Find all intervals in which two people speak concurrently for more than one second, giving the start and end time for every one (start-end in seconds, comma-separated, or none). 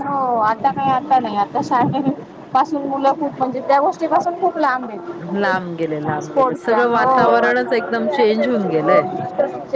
6.2-7.5